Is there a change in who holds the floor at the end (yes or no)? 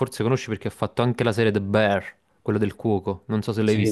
yes